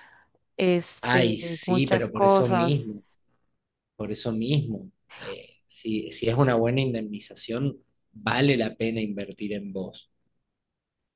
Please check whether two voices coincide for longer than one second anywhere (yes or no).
yes